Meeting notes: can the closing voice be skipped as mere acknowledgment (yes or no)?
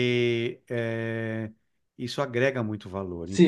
no